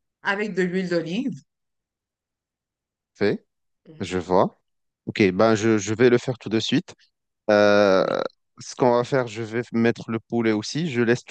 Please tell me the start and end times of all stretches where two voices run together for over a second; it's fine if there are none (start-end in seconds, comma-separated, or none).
none